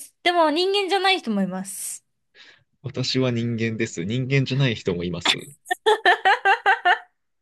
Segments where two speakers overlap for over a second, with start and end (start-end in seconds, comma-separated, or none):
none